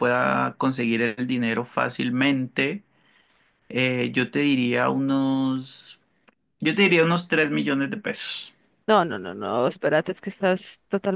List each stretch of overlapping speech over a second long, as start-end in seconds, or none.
none